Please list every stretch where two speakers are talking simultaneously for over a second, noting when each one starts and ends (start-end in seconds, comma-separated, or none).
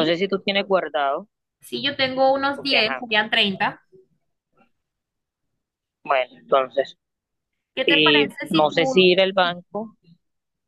7.9-9.6